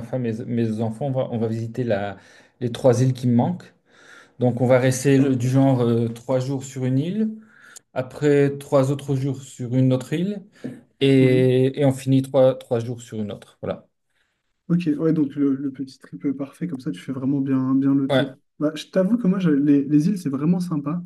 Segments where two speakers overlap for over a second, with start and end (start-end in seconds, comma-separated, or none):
none